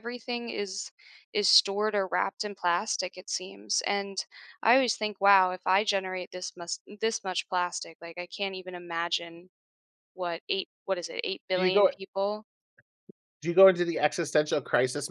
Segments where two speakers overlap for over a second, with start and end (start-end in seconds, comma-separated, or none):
none